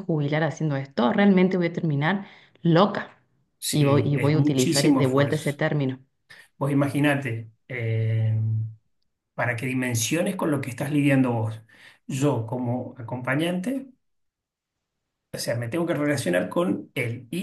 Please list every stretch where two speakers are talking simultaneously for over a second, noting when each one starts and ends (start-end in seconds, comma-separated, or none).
3.7-5.6